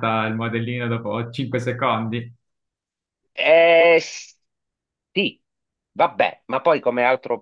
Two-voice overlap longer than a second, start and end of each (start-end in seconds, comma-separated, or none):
none